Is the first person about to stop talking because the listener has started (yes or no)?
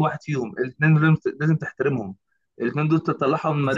no